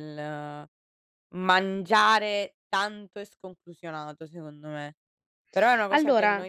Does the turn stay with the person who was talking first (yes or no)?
yes